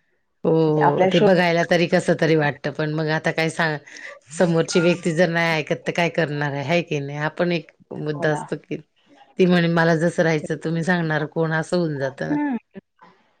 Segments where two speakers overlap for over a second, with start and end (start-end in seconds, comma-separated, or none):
0.7-2.3